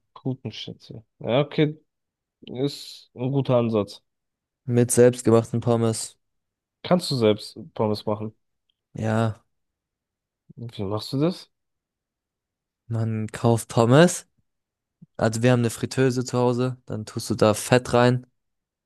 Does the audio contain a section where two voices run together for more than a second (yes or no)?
no